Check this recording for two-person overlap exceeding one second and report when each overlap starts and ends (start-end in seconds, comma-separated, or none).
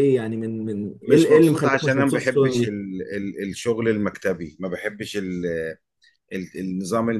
1.0-2.7